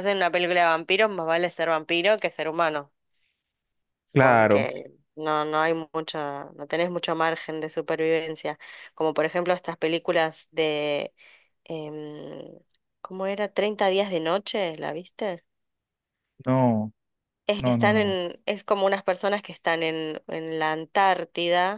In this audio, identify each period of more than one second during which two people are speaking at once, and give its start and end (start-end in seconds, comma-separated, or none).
none